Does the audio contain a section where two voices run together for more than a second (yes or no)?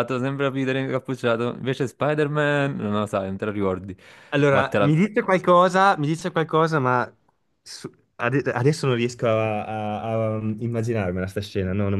no